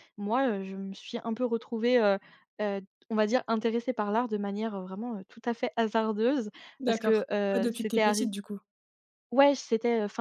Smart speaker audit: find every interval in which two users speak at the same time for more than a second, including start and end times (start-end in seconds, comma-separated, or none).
6.8-8.3